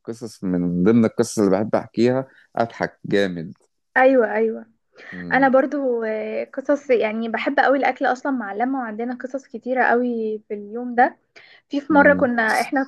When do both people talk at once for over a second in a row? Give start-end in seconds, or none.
none